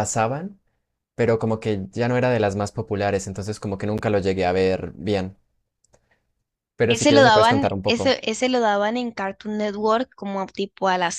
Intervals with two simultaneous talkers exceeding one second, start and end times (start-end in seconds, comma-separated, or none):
6.9-8.1